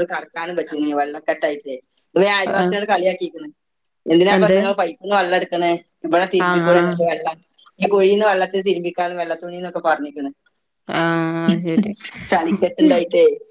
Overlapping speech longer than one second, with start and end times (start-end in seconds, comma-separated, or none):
none